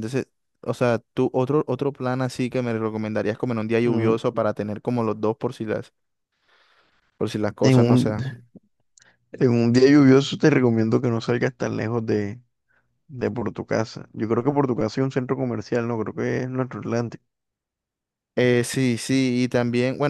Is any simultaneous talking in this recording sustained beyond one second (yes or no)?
no